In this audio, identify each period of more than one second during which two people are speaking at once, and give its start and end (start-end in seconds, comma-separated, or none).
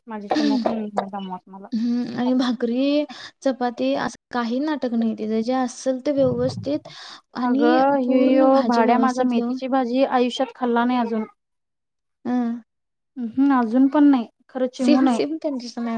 7.5-9.6